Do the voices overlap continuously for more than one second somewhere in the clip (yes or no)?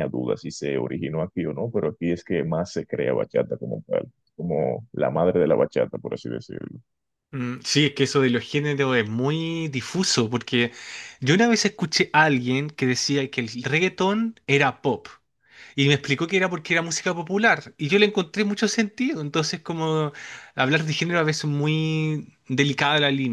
no